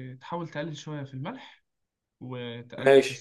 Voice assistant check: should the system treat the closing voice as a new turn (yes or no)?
no